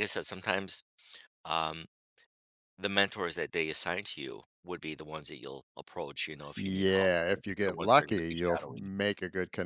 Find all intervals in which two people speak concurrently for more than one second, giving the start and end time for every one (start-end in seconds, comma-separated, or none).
6.5-9.0